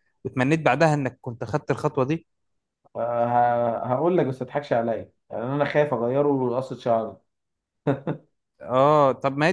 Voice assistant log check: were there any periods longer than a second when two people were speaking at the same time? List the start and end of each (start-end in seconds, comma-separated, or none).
none